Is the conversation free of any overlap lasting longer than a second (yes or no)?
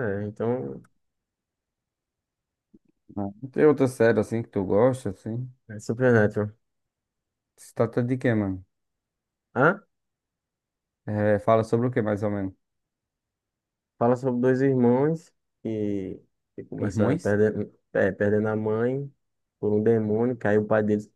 yes